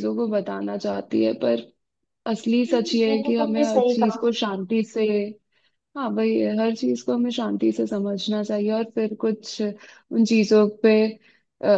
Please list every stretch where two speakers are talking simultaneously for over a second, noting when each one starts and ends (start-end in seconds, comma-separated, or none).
2.7-4.3